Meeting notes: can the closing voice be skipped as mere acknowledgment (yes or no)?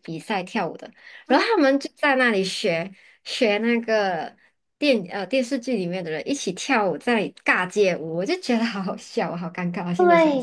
no